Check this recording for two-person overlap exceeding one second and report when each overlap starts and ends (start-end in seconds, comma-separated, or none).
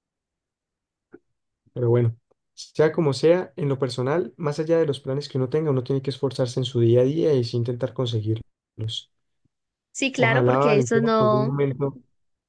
10.2-11.5